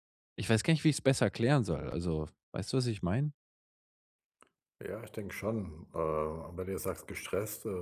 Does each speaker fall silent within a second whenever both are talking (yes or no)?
yes